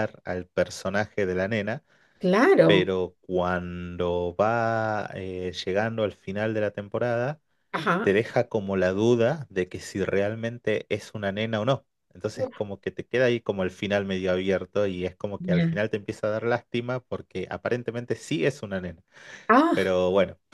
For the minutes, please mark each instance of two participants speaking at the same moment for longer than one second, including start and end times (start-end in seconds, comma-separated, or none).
none